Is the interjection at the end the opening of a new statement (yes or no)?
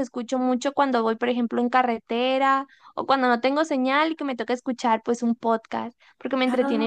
no